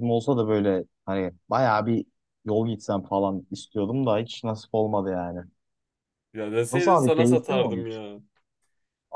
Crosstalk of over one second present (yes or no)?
yes